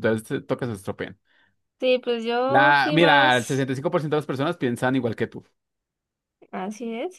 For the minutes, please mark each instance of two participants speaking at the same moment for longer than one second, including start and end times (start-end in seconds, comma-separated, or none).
2.5-3.7